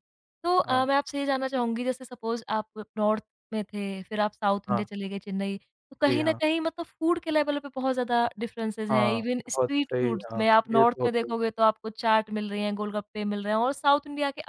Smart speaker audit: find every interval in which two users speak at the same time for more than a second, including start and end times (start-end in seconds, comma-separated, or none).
8.9-11.4